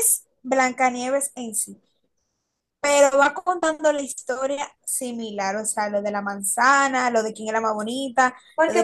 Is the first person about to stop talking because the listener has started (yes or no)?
yes